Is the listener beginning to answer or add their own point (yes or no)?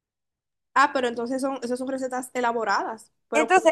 yes